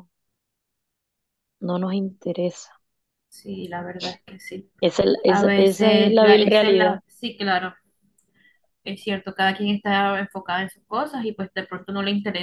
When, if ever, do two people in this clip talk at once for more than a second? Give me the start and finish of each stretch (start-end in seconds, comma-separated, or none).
5.3-7.0